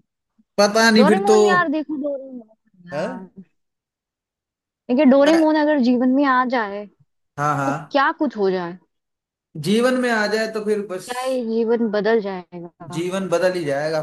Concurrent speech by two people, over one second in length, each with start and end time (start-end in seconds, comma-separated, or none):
none